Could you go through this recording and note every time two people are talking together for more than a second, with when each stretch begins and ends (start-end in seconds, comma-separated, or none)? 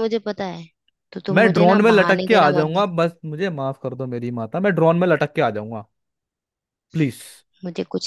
1.4-3.0